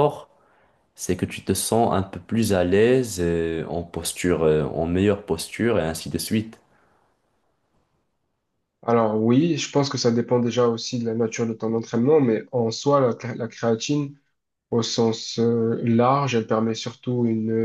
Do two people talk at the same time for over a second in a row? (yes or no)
no